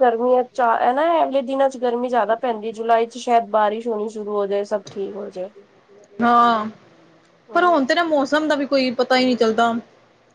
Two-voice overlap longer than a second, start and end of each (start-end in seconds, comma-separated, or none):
none